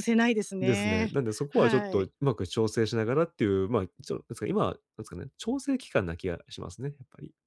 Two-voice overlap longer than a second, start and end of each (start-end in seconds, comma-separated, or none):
0.6-2.1